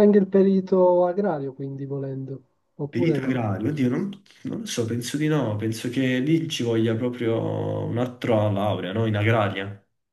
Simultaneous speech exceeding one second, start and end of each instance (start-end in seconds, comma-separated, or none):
none